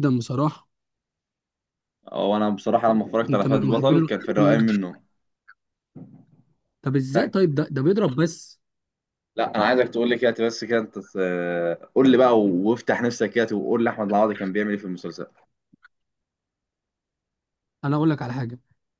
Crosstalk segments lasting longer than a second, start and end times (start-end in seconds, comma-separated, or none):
3.3-4.6